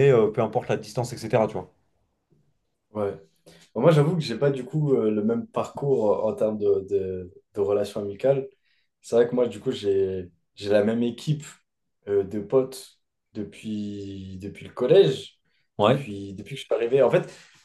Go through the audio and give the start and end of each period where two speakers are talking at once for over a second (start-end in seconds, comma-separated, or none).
none